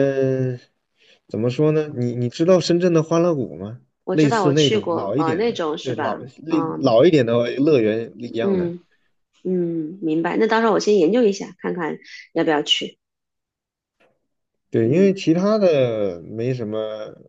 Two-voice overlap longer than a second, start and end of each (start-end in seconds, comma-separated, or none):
4.0-7.0